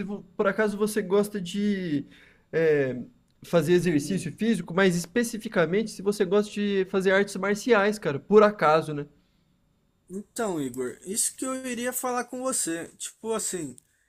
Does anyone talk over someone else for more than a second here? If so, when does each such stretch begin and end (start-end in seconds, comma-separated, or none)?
none